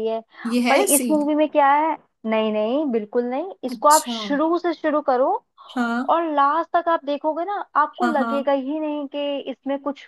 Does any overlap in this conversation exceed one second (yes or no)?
no